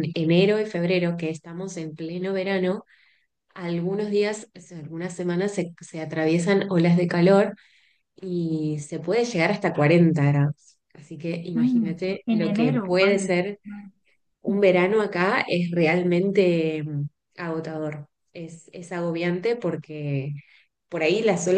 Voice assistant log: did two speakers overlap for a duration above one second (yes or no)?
yes